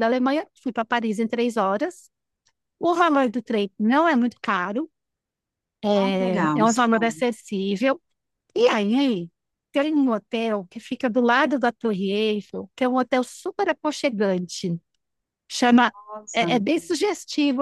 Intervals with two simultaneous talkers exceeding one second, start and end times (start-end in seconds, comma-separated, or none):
5.9-7.2